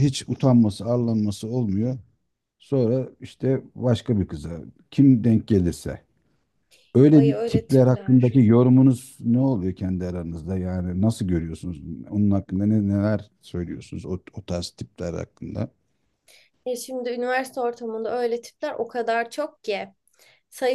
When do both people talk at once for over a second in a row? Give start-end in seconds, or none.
7.1-8.4